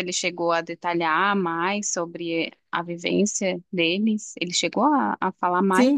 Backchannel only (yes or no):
no